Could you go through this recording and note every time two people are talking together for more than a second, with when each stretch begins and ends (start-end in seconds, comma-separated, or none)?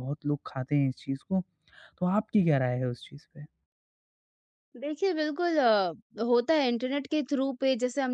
none